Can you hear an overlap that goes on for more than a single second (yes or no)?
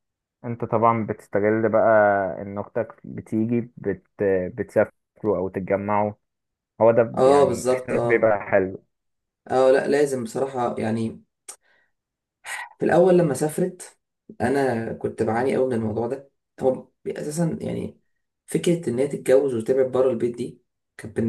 yes